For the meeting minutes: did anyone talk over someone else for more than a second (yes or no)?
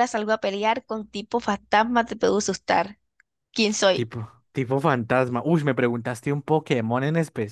no